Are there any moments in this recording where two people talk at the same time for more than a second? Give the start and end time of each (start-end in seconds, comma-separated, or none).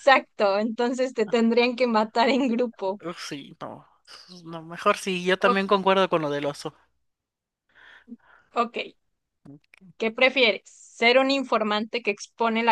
none